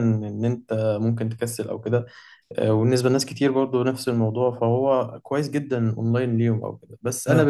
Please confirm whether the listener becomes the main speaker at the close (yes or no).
no